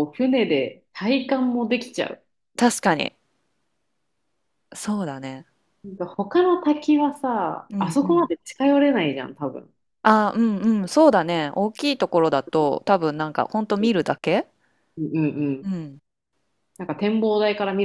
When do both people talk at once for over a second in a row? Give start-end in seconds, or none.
none